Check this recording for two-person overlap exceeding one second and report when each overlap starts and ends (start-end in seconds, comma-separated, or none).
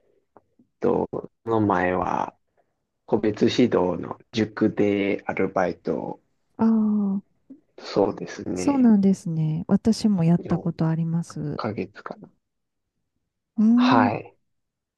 none